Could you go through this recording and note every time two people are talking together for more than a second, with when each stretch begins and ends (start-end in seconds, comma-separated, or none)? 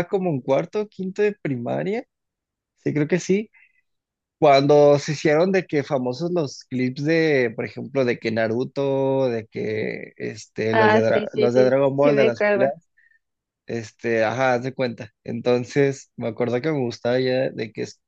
10.7-12.7